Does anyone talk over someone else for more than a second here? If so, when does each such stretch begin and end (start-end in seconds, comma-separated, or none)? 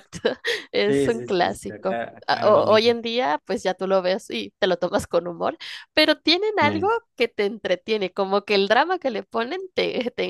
0.9-3.0